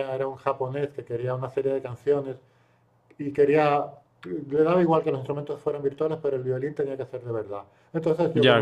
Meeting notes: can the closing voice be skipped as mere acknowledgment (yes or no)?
yes